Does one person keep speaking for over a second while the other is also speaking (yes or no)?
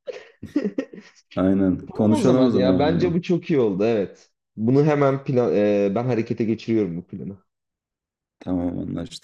yes